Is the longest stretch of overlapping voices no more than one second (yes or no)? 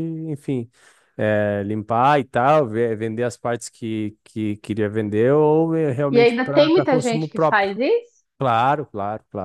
no